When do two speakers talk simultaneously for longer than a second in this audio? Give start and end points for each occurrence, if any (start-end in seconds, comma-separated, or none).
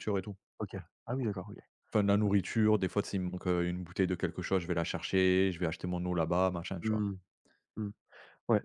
none